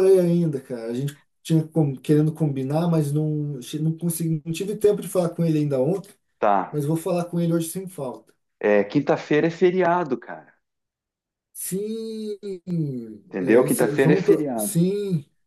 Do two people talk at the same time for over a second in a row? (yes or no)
yes